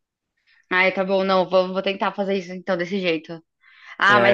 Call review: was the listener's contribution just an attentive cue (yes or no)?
yes